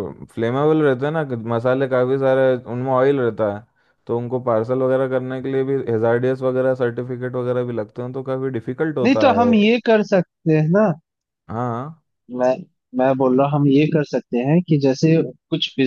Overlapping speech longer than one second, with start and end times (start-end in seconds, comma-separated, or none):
none